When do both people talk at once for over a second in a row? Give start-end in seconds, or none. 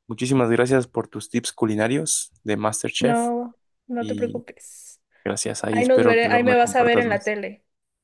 5.7-7.3